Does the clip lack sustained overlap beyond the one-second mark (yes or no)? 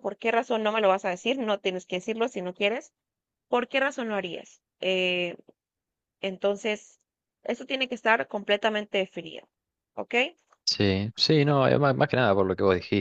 yes